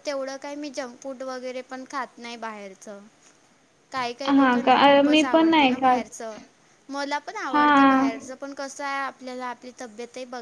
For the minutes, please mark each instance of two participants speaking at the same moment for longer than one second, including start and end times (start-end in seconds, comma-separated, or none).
4.4-6.0